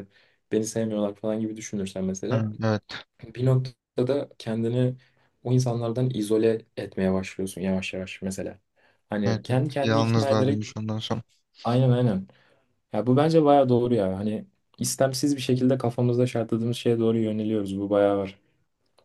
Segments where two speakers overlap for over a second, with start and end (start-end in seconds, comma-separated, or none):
9.2-10.7